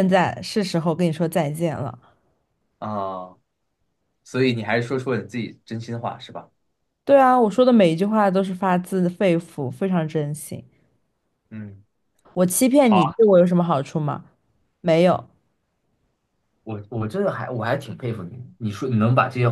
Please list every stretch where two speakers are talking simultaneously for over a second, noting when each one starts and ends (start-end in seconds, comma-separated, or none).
none